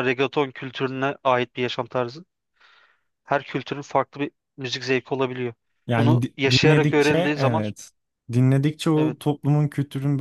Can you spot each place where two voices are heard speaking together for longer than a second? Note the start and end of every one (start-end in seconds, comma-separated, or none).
6.0-7.6